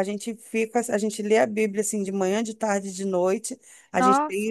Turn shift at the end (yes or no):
no